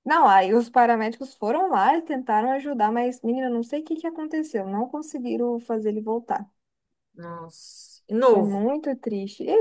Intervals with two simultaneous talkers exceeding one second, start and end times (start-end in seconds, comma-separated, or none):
none